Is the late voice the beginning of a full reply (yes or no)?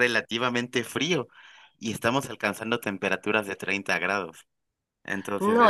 yes